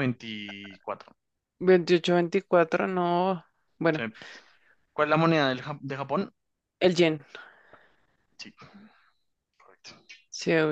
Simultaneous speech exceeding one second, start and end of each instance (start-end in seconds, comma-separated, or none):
none